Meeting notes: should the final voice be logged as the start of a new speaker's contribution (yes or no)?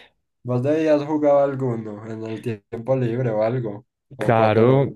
yes